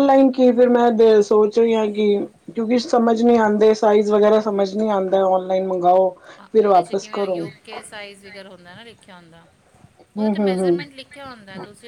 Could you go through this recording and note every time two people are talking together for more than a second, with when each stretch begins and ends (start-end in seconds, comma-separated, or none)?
6.5-7.7